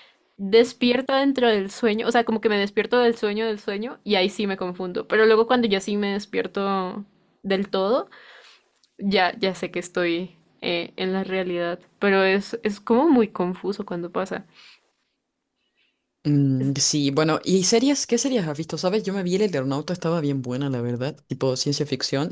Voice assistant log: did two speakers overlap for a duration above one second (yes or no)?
no